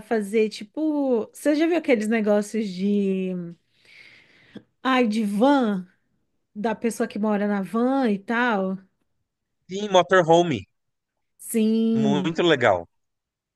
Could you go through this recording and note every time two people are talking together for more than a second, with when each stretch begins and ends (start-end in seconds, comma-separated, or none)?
none